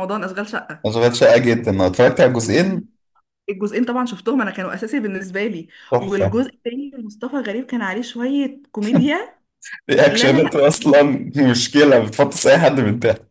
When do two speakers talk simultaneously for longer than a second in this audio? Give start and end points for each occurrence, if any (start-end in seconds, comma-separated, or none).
none